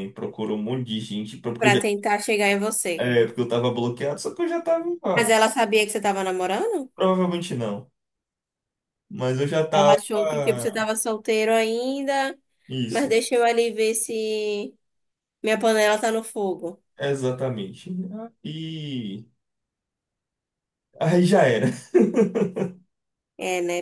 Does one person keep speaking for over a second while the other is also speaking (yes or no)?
no